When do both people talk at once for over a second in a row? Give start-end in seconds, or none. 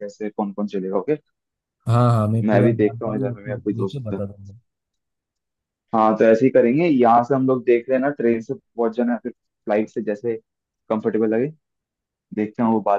2.4-4.2